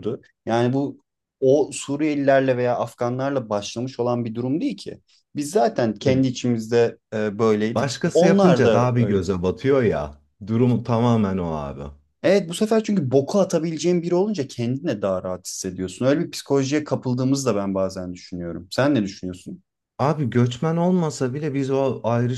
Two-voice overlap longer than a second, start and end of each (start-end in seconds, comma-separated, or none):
7.7-9.2